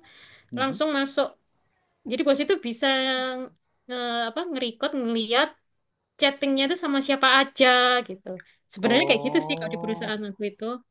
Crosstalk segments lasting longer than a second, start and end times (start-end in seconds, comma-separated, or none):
8.8-10.1